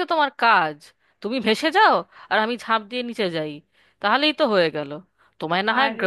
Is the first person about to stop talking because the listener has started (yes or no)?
no